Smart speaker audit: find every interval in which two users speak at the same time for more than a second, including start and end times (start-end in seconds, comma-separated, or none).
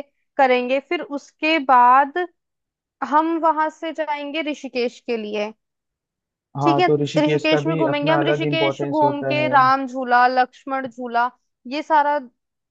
6.6-9.5